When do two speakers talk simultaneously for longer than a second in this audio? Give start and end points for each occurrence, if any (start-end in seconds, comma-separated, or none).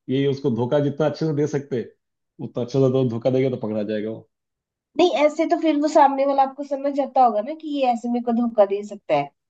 none